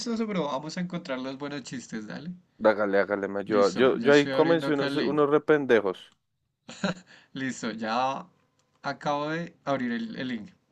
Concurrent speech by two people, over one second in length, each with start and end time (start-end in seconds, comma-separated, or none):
3.5-5.2